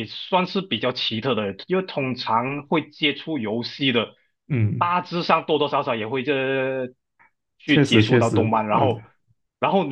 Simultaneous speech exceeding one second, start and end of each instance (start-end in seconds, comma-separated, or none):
7.7-8.9